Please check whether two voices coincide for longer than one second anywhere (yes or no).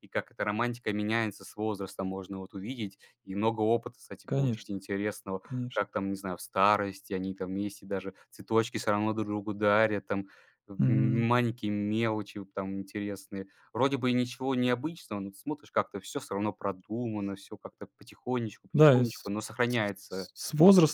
no